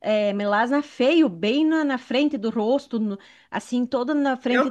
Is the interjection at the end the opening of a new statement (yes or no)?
yes